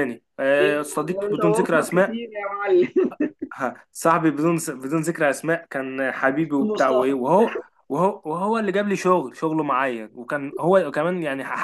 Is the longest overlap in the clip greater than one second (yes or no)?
yes